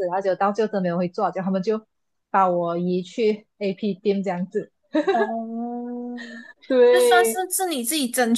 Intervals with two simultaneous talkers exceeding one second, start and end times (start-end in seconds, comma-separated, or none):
none